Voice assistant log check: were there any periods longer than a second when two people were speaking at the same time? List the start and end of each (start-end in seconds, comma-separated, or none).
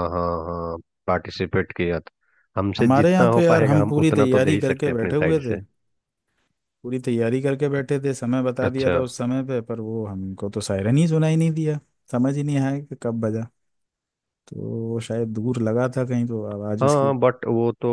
2.8-5.6